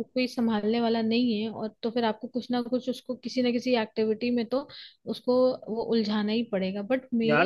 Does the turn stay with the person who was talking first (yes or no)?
no